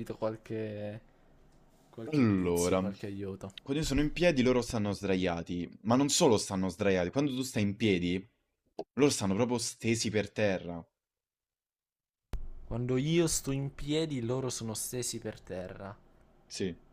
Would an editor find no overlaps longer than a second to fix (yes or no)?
no